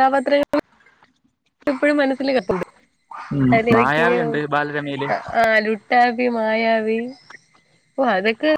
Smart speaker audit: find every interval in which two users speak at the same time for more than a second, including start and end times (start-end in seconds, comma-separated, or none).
none